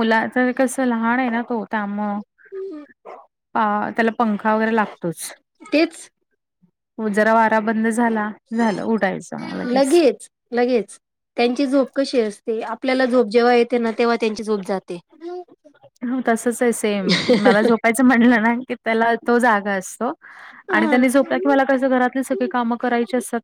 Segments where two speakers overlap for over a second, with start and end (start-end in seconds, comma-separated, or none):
none